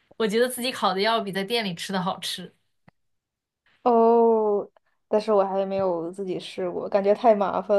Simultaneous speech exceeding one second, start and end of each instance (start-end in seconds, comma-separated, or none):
none